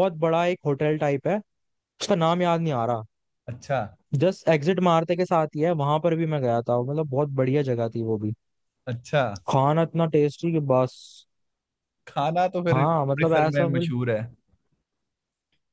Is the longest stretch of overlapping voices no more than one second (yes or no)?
no